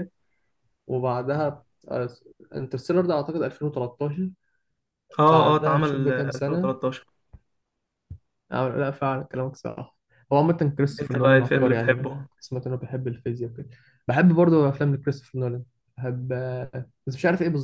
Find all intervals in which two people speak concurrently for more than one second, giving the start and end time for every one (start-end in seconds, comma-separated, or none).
5.3-6.7, 11.0-12.2